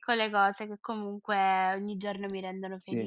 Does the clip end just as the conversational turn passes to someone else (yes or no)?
yes